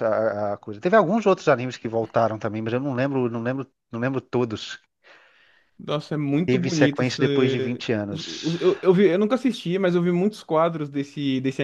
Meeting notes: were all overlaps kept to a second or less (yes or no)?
no